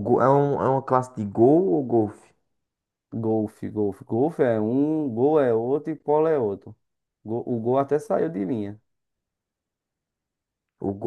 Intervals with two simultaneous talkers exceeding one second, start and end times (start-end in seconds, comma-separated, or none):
none